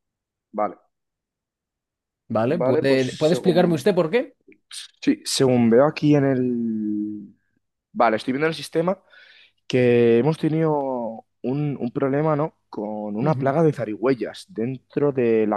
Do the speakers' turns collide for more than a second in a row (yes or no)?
yes